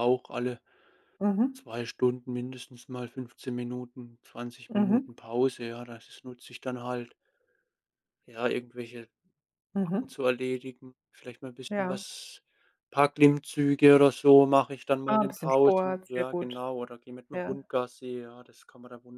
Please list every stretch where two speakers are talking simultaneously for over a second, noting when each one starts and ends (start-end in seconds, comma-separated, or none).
15.1-16.6